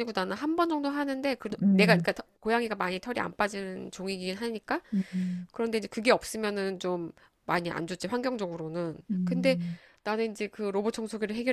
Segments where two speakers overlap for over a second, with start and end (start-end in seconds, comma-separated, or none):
none